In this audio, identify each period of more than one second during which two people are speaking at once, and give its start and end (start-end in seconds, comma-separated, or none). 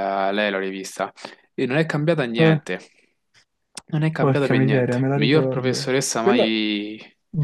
4.2-6.5